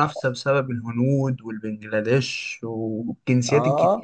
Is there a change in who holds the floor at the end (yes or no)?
yes